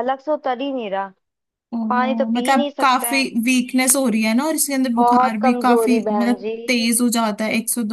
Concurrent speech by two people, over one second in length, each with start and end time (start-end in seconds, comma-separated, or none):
1.9-3.2, 5.0-6.5